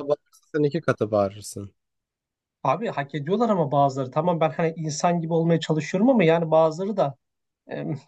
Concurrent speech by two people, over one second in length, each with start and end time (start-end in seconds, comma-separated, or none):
none